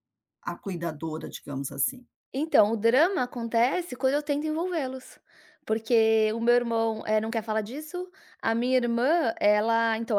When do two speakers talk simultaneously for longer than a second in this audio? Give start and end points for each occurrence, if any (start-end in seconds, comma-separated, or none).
none